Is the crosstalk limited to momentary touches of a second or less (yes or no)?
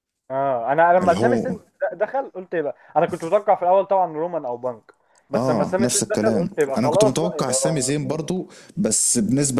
no